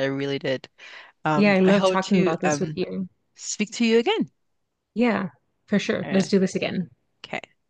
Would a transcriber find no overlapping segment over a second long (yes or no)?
no